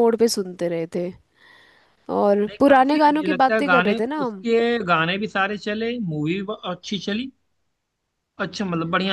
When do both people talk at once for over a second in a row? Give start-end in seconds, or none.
2.5-4.5